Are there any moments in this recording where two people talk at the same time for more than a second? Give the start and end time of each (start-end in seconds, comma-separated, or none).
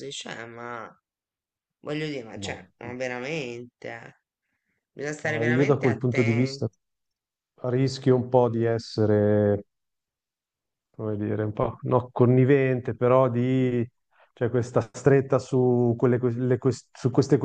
5.2-6.7